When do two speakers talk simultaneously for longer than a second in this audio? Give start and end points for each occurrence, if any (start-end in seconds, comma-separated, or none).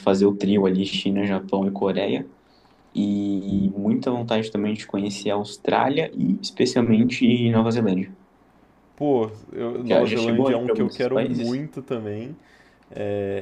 9.8-11.6